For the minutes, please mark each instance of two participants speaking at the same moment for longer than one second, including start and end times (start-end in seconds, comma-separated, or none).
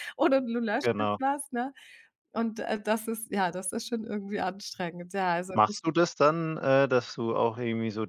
none